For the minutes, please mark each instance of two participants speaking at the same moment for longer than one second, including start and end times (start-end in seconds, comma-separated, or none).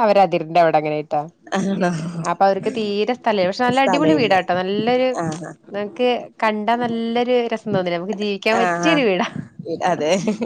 none